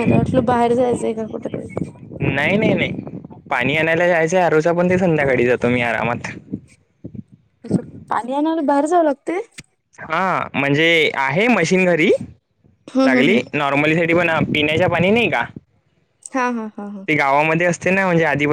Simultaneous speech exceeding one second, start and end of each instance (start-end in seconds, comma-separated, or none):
none